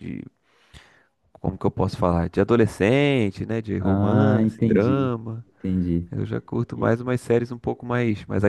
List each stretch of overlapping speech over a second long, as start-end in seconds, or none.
3.8-5.4